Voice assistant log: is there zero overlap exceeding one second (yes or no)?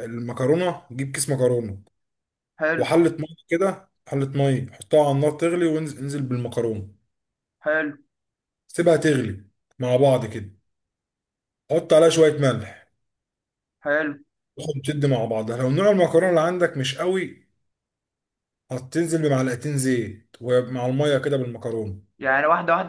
yes